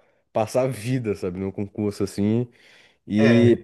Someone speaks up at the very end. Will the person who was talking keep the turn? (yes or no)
yes